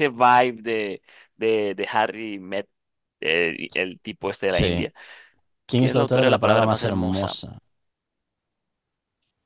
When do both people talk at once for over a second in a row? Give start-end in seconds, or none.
5.7-7.4